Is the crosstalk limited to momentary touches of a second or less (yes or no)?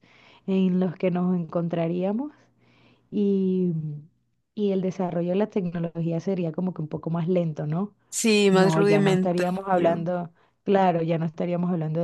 no